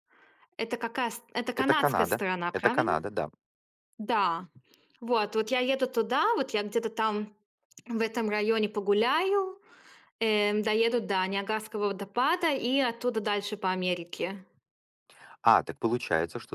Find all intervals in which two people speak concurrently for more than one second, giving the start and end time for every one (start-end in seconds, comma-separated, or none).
1.6-3.0